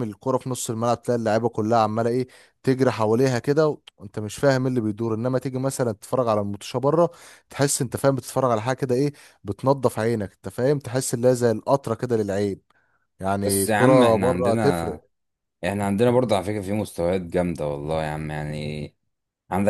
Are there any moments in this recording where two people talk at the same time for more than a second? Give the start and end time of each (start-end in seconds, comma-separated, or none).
13.4-14.9